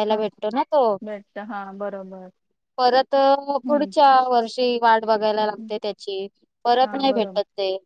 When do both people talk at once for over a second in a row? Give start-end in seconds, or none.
none